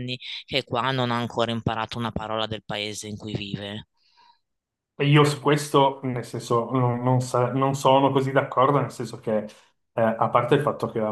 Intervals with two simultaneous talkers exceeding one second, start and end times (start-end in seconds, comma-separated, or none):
none